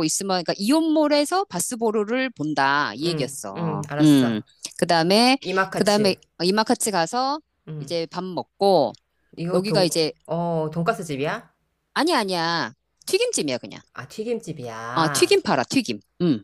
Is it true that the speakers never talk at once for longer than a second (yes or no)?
no